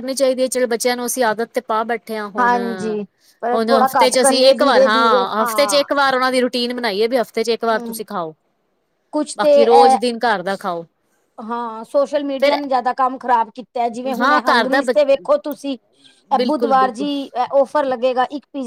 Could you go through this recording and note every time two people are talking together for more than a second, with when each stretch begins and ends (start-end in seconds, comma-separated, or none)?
3.5-5.2